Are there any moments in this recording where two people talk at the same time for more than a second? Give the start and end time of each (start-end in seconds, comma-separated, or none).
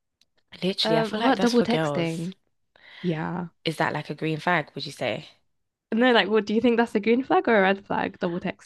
0.8-2.3